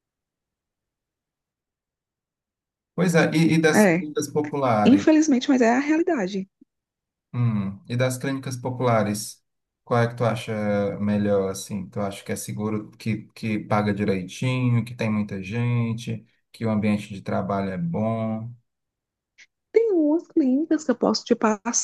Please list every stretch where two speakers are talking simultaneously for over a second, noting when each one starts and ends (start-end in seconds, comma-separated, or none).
none